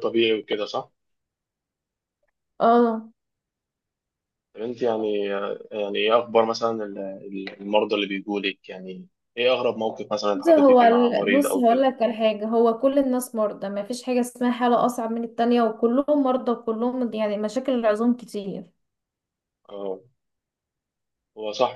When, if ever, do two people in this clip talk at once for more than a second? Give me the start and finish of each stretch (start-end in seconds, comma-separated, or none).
10.3-11.9